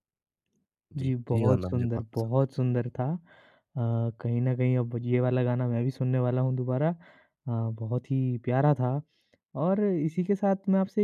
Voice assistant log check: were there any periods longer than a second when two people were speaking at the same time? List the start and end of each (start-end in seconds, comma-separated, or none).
1.0-2.5